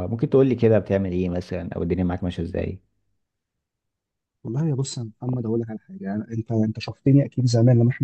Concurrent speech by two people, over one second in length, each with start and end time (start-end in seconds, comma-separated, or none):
none